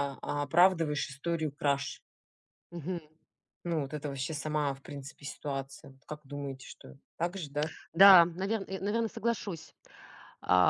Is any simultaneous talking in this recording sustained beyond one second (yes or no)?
no